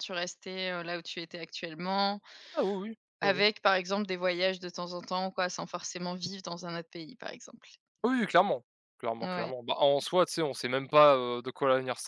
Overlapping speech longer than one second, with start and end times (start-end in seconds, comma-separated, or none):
none